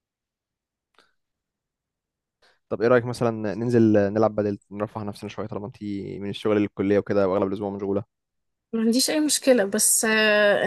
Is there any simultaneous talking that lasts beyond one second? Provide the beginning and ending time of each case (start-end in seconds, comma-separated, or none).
none